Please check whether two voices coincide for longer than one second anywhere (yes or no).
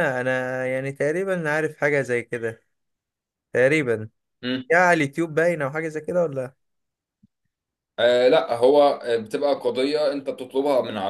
no